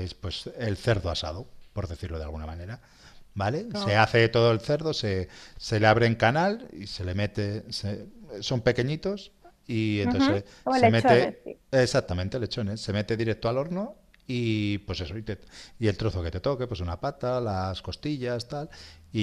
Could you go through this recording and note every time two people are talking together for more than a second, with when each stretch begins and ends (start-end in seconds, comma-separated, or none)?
10.0-11.4